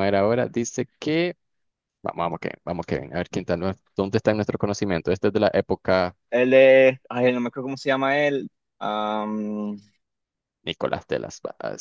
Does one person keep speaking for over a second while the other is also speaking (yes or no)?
no